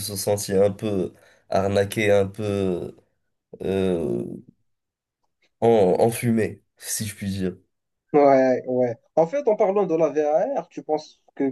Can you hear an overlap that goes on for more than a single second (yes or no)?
no